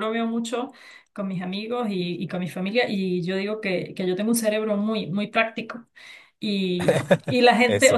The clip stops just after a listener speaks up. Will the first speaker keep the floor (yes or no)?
yes